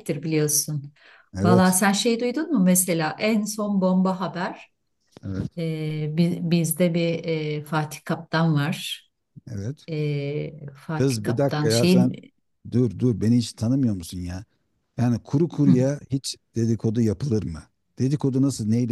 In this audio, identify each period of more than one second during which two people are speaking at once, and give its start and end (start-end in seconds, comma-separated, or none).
10.9-12.2